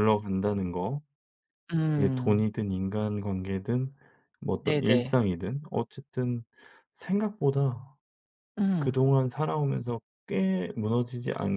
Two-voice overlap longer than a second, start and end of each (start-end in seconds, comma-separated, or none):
none